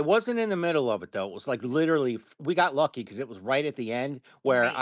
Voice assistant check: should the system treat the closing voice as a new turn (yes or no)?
no